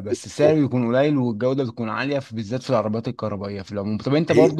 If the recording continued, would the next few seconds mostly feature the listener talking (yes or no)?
no